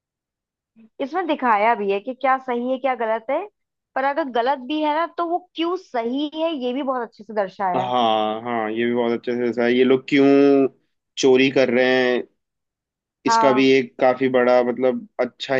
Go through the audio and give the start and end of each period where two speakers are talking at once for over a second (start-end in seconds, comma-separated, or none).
none